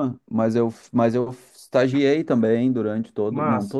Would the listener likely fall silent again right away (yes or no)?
yes